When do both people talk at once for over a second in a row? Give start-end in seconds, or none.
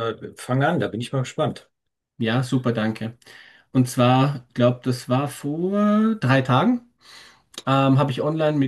none